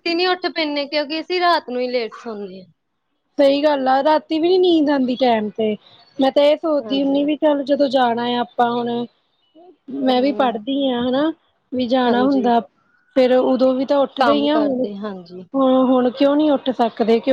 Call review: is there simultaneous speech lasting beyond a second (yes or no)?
yes